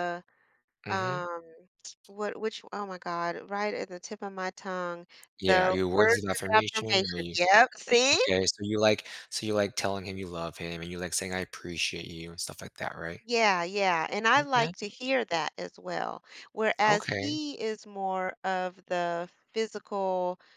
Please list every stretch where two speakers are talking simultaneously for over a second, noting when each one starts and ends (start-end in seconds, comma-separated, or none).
5.4-7.4